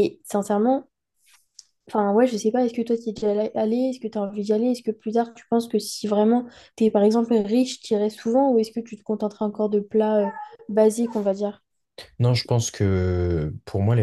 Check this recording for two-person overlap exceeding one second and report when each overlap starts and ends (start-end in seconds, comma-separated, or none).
none